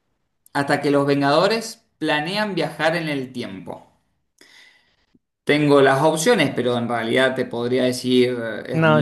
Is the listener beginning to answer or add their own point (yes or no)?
yes